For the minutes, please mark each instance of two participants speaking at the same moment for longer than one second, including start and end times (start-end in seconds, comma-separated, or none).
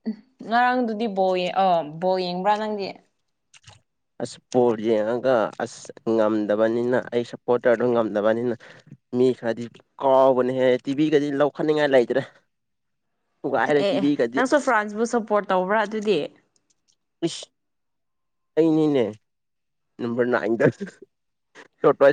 none